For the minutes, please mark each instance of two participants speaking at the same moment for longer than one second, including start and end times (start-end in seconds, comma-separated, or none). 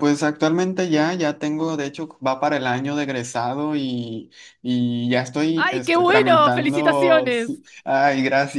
5.5-7.6